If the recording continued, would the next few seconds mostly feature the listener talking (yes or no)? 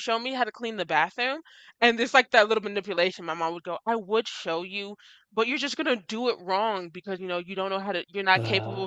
no